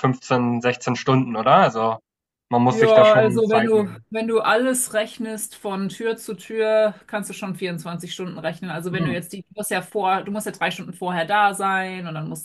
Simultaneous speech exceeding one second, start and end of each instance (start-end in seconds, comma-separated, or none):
2.7-4.0